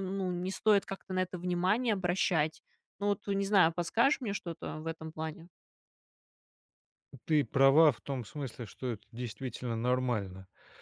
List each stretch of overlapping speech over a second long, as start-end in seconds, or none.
none